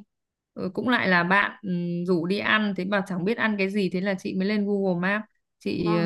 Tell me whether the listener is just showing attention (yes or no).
yes